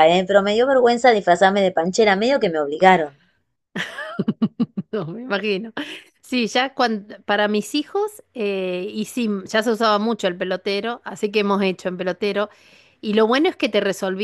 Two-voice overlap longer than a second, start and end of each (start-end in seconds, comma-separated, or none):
none